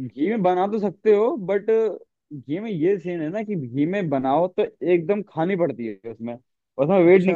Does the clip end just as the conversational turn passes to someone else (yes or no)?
no